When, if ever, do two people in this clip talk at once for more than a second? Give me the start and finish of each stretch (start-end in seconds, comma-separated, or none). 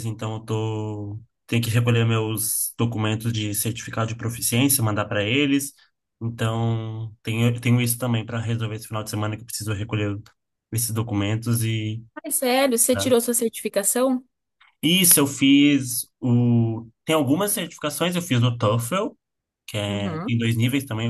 none